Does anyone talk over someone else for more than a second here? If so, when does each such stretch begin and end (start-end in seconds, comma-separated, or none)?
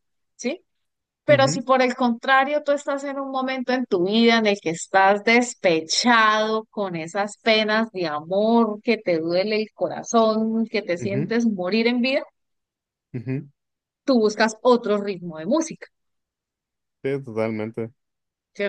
none